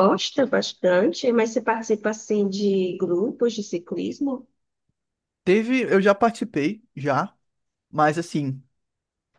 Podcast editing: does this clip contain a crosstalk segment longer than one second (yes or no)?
no